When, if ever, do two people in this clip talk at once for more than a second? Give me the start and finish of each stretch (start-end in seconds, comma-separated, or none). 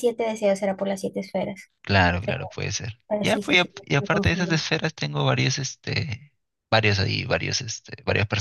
3.1-4.7